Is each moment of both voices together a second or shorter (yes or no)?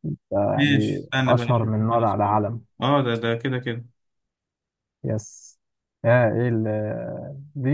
no